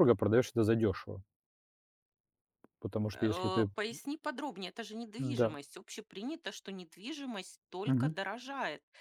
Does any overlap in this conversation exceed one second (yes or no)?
no